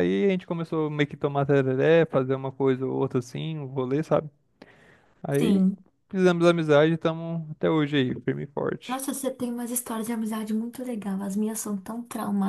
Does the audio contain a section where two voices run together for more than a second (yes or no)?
no